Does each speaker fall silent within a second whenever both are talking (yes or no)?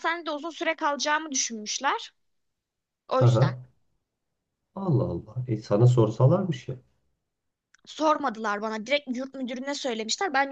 yes